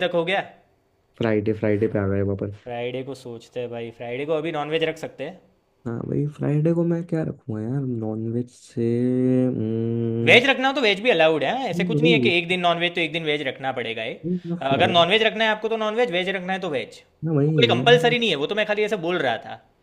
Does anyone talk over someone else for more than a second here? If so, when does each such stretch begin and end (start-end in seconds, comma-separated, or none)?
none